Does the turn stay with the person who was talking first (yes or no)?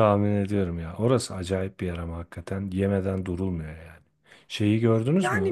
no